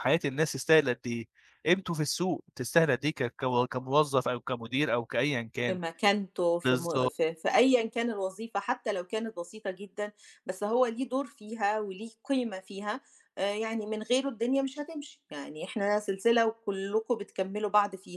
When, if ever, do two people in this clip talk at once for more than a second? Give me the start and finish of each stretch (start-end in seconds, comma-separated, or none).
none